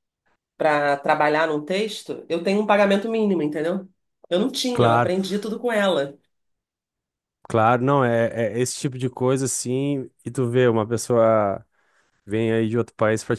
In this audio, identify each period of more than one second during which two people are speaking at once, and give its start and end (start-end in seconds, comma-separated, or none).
none